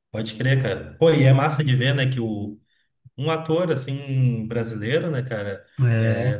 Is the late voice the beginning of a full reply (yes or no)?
no